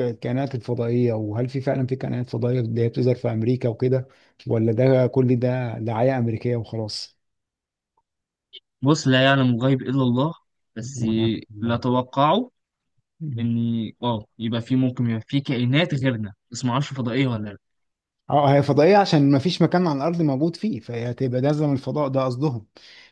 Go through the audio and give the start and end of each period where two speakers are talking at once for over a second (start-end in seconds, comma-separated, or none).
none